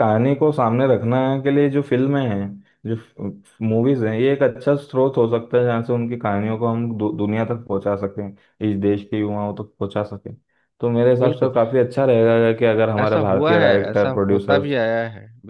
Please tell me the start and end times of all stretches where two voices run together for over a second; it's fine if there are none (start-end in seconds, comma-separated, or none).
13.0-14.8